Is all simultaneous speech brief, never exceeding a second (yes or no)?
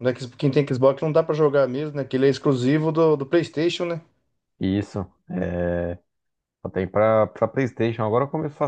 yes